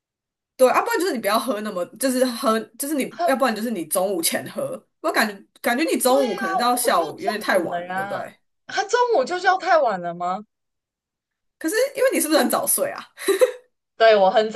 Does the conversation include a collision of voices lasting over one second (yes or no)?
yes